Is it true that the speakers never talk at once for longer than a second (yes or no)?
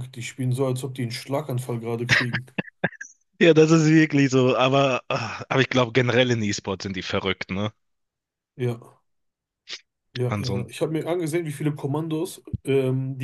yes